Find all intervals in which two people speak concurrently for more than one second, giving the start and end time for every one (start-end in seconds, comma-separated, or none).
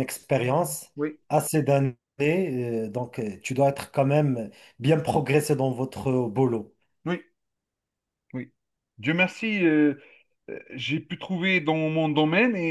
none